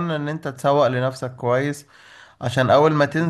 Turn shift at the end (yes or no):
no